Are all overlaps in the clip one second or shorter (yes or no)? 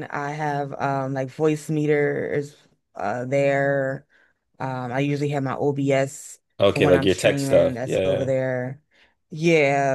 no